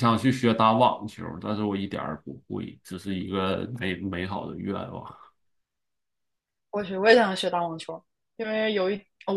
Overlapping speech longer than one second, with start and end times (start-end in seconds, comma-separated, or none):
none